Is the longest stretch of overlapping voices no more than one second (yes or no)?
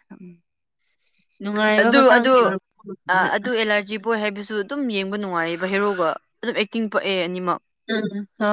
yes